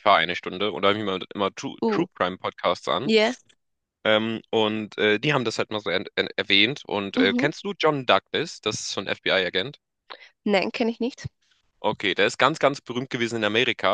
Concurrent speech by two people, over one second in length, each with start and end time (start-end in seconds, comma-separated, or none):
none